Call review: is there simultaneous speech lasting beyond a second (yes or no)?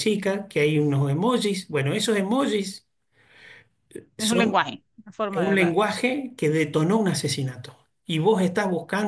no